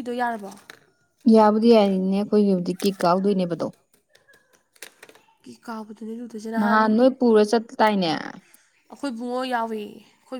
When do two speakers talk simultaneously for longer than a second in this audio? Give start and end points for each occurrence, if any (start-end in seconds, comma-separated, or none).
none